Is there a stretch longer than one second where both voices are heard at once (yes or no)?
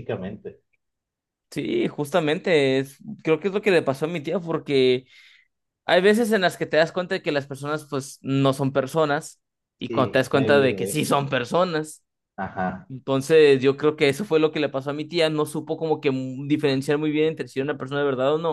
yes